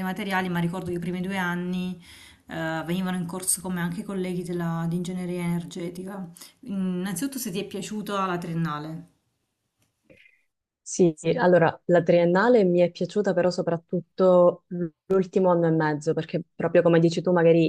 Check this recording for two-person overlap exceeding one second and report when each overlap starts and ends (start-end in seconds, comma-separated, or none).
none